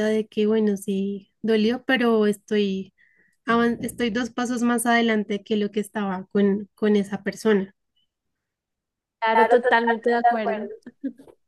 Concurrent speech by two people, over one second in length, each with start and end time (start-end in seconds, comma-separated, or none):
9.3-10.7